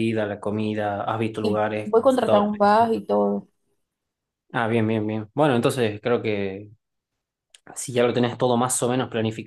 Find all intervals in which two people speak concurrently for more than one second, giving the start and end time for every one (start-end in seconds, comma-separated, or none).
1.4-2.9